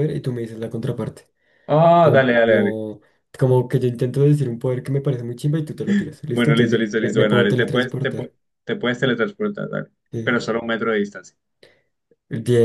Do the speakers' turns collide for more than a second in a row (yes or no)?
yes